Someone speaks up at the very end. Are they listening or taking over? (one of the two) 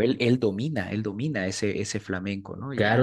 taking over